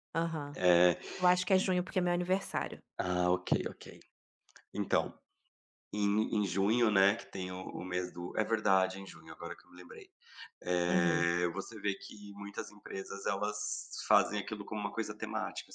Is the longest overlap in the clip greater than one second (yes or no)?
no